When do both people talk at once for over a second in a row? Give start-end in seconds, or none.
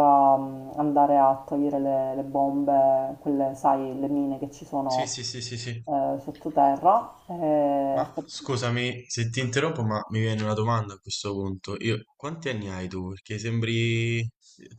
none